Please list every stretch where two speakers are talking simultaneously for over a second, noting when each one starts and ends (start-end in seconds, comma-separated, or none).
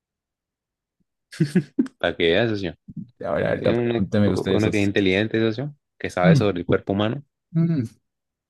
3.6-4.9